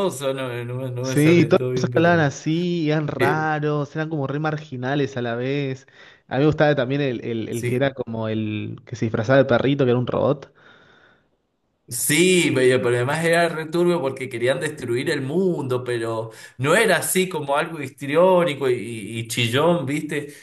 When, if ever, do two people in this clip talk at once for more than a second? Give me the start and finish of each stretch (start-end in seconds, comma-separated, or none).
1.0-2.4